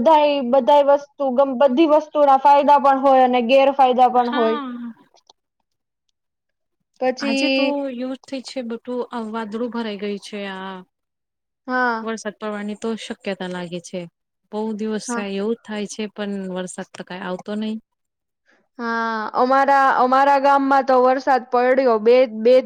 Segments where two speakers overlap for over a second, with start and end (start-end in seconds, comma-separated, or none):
none